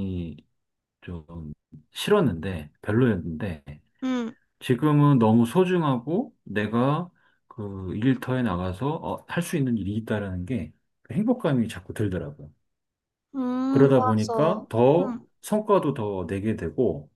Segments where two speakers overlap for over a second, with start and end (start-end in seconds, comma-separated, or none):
13.7-15.3